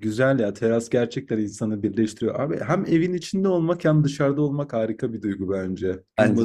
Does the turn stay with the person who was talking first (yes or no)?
yes